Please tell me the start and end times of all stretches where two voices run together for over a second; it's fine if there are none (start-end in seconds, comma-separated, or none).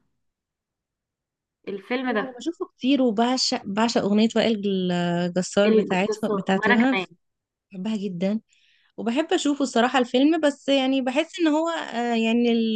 5.7-7.0